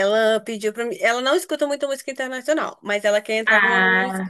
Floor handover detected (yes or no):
no